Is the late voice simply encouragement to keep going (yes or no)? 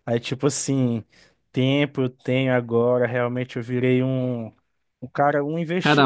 no